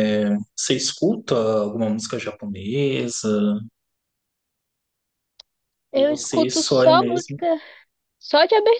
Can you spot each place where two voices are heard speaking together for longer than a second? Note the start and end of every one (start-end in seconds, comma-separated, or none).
5.9-7.4